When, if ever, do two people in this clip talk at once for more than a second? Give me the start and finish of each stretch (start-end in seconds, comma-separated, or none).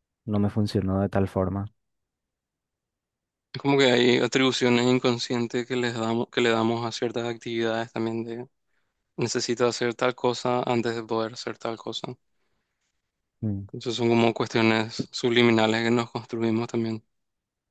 none